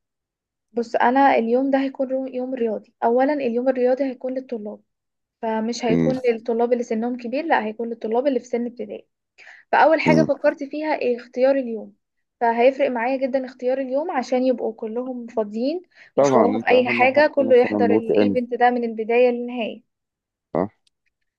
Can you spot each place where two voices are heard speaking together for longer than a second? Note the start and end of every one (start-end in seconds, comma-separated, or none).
16.2-18.4